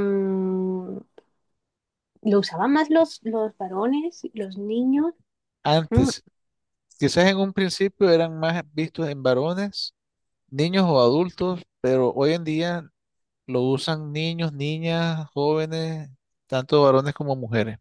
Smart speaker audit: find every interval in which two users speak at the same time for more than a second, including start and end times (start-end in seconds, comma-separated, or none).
none